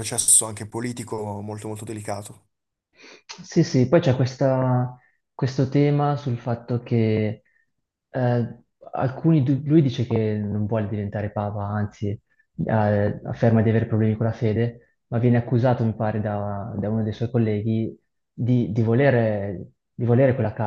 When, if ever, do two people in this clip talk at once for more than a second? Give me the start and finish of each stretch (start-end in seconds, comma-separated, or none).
none